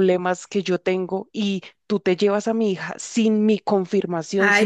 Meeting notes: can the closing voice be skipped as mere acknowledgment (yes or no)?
no